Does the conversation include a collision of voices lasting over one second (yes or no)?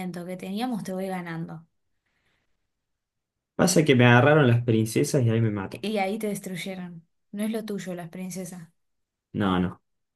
no